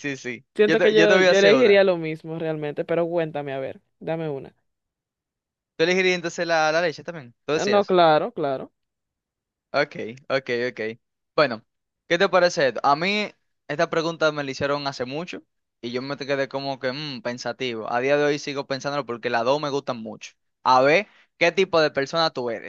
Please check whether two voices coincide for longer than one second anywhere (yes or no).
yes